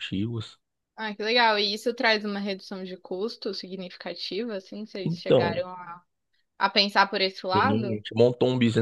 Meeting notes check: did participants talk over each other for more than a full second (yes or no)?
no